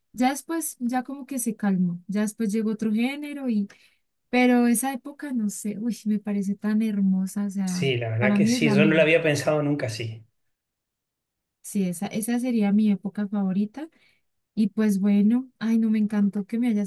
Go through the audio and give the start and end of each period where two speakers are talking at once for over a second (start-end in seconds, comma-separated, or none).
7.7-9.1